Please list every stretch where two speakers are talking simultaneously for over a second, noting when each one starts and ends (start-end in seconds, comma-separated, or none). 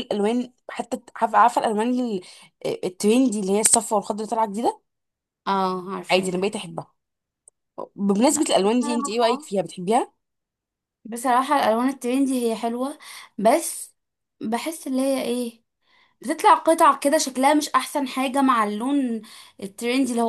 8.3-9.5